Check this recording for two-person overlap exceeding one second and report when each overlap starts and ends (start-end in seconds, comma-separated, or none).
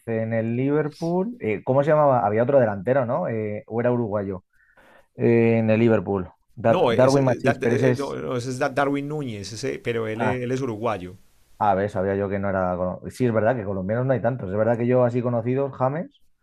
6.7-8.2